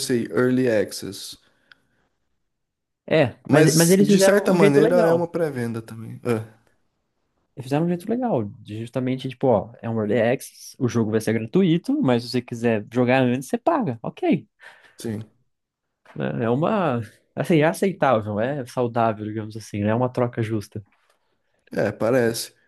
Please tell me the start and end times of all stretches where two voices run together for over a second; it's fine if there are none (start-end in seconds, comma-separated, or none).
3.5-5.3